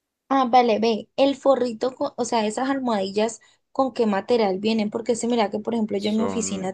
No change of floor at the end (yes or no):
yes